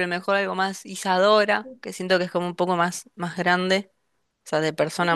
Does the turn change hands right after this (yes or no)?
yes